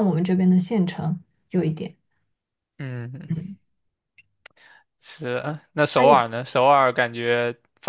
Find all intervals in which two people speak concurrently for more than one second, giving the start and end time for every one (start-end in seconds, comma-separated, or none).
none